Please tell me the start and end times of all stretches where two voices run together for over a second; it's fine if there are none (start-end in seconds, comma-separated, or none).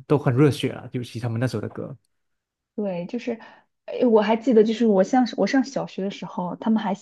none